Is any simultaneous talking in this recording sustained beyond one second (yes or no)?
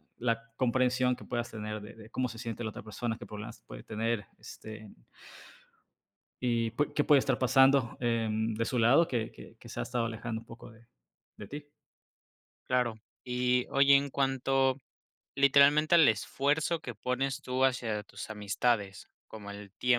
no